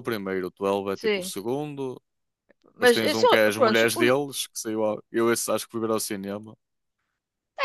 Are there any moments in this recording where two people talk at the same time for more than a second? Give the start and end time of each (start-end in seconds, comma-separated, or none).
2.8-4.1